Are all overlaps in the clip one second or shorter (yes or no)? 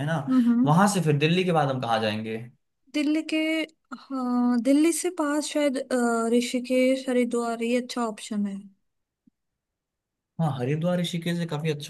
yes